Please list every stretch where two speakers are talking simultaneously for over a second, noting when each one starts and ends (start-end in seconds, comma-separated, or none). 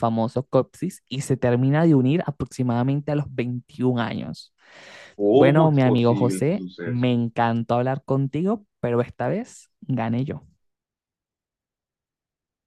5.3-7.1